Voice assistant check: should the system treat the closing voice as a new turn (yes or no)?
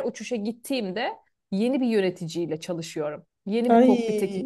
no